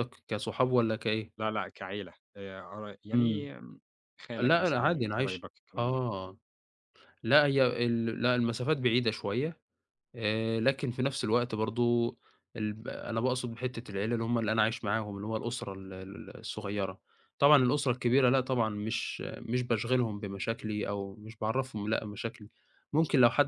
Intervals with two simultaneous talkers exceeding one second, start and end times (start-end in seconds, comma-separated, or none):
4.4-6.0